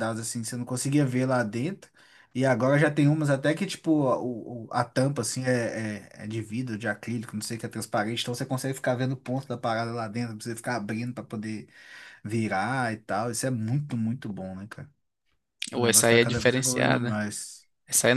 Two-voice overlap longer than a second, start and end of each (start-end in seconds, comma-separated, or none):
15.7-17.2